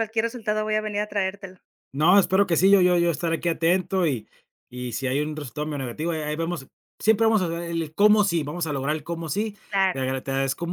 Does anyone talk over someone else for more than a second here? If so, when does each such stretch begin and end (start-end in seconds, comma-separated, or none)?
none